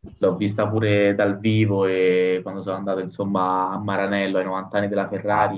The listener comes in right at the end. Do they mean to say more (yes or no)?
no